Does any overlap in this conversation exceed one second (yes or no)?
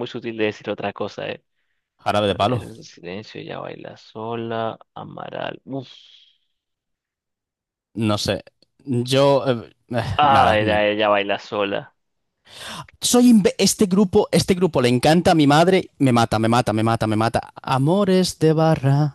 no